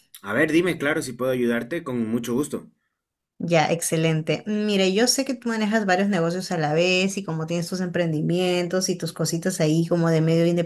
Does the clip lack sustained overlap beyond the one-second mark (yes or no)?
yes